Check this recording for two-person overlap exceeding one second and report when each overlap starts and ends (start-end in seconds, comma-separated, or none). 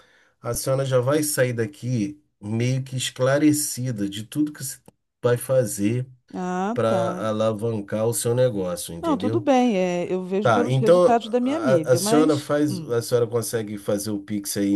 10.4-12.9